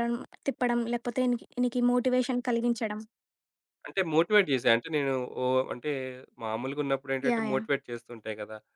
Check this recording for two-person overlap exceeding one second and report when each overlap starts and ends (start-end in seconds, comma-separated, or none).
none